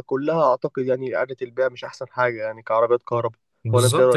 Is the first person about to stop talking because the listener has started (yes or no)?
yes